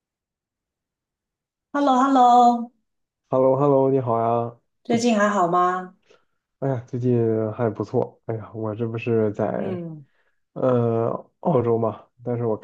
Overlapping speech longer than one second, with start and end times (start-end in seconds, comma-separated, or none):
none